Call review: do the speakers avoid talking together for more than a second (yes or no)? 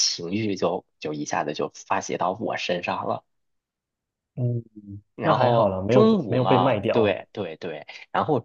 no